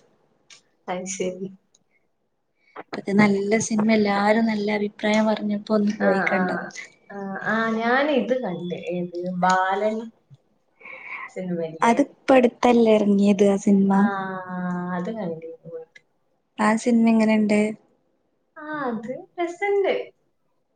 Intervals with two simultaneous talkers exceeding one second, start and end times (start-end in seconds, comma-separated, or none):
none